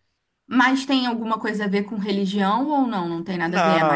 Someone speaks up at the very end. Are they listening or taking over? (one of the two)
taking over